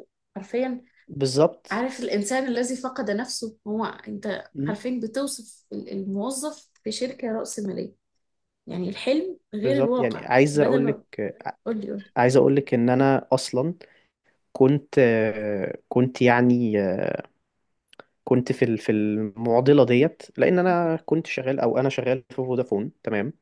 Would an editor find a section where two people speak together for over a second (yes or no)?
yes